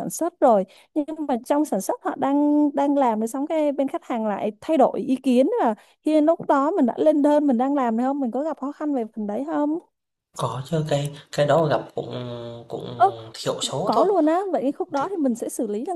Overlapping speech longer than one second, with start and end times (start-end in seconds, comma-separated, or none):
none